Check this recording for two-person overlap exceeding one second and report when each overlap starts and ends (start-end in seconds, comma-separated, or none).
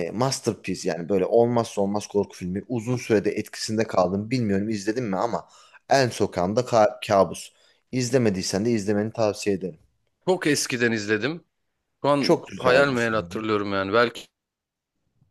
12.2-13.4